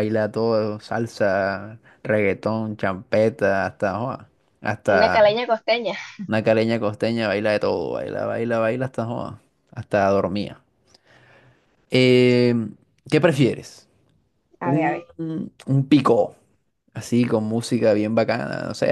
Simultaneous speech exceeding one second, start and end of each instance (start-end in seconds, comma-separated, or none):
none